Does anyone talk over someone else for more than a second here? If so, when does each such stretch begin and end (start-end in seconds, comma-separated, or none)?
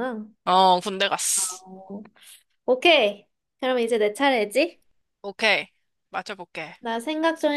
none